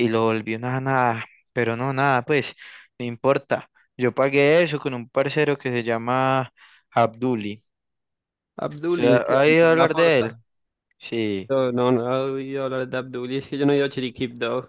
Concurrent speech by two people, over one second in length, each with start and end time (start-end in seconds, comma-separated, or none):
8.9-10.4